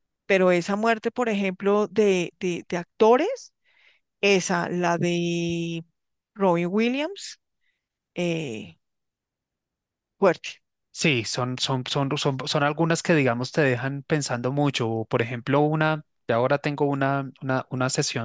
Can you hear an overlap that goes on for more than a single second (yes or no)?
no